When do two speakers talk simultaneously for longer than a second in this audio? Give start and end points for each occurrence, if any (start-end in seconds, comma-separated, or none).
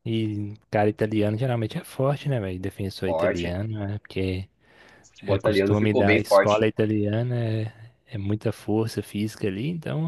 5.3-6.7